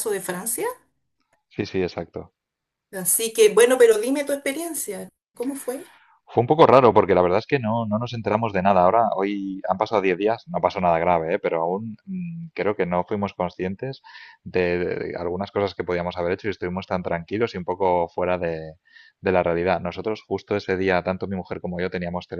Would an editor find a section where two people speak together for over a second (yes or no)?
no